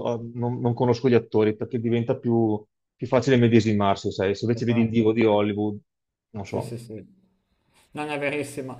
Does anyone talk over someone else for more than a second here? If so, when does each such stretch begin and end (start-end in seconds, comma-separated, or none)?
none